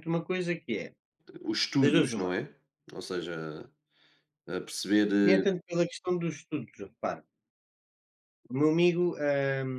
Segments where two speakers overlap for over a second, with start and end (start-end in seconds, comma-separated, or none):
none